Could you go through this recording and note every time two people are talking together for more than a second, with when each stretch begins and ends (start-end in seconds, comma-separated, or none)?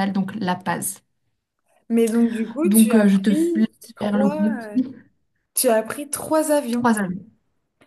2.6-4.3